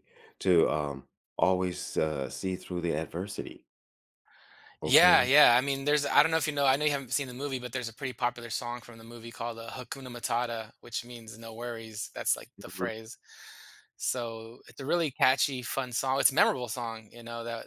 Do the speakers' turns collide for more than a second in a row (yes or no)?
no